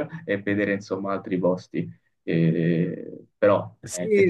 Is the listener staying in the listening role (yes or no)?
no